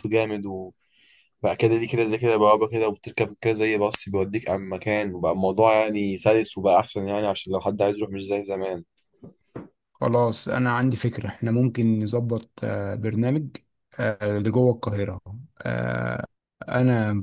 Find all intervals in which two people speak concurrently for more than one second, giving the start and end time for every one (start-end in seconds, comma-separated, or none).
none